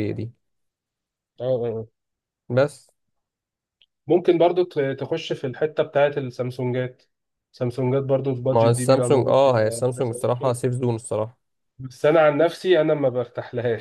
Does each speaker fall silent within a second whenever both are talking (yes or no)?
no